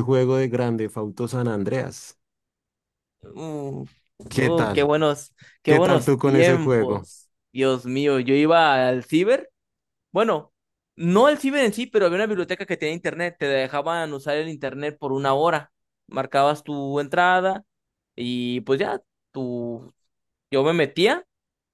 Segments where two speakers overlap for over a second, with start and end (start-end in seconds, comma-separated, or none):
5.7-7.1